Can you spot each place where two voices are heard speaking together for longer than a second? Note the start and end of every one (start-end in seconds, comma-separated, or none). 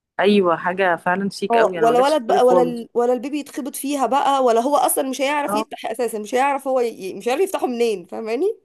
1.5-2.9